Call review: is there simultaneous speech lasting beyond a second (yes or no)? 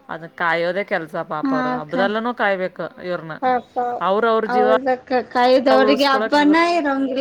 no